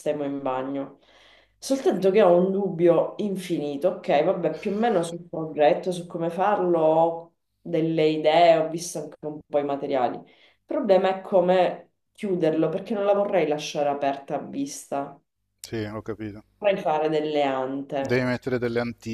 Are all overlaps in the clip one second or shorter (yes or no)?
yes